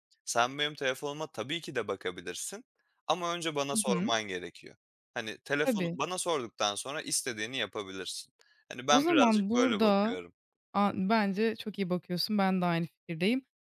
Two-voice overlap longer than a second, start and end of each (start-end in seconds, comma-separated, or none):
8.9-10.2